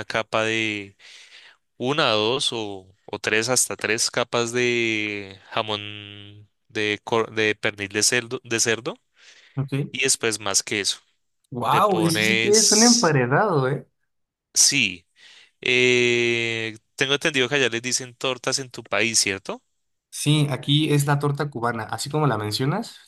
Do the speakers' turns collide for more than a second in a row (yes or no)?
yes